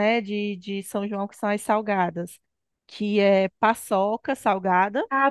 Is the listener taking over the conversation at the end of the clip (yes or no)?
yes